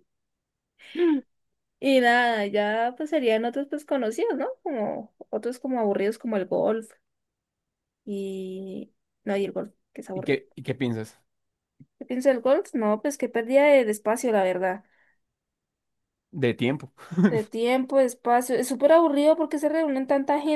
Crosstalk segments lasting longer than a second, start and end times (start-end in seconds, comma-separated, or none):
none